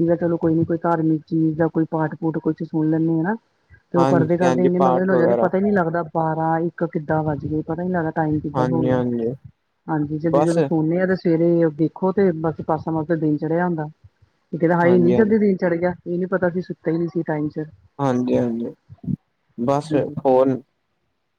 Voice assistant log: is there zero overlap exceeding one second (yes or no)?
no